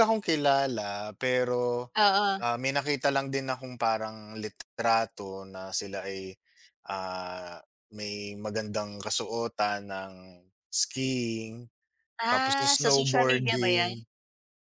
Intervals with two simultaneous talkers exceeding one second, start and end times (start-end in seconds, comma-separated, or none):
12.3-13.9